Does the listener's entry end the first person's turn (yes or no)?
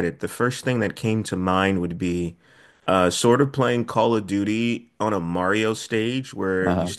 no